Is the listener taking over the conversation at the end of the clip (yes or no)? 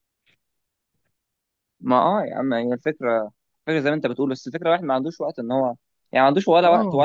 no